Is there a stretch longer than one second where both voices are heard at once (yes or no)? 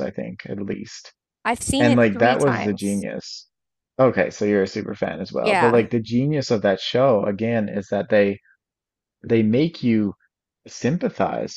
yes